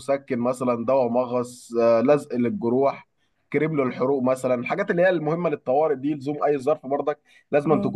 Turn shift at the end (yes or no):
no